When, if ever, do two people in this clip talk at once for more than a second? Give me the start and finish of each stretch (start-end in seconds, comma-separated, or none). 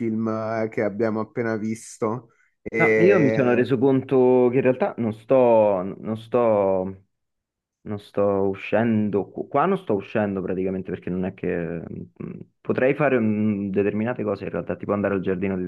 none